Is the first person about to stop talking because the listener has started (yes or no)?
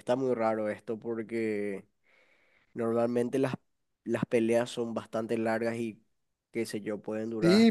yes